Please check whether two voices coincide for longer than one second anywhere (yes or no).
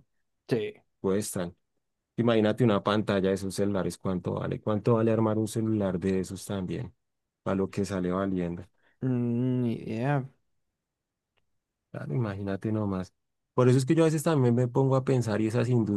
no